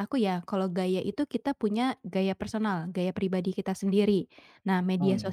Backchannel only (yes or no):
yes